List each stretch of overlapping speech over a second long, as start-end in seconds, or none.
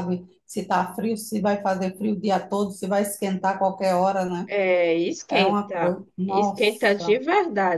5.3-7.2